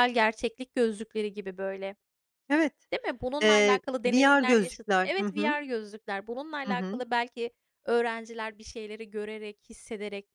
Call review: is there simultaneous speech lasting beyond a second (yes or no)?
yes